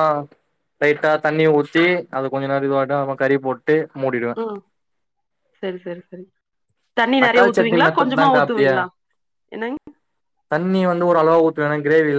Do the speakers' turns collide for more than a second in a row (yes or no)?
yes